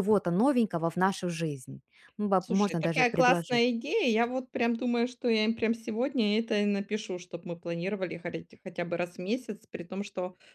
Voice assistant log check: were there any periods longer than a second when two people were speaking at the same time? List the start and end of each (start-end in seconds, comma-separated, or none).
2.4-3.6